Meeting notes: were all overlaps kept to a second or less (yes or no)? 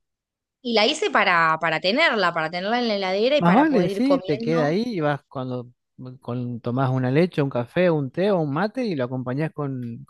no